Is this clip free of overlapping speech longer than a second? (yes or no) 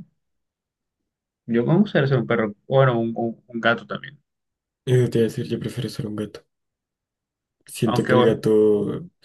yes